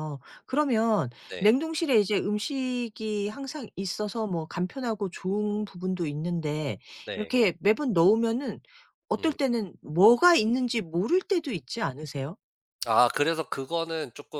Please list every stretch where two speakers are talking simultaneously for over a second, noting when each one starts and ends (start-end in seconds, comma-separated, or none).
none